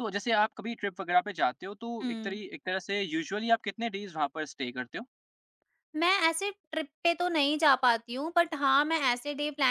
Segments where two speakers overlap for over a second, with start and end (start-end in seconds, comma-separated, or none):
none